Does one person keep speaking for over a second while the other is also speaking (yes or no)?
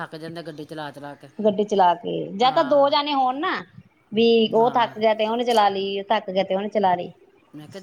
no